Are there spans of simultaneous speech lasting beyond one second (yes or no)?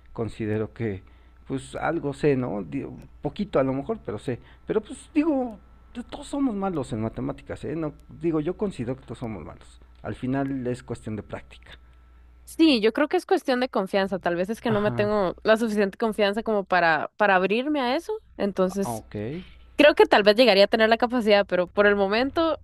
no